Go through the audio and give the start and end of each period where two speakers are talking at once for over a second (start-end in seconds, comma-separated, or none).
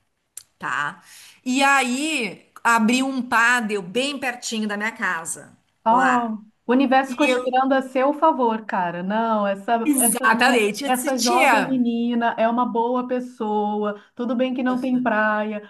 9.8-11.8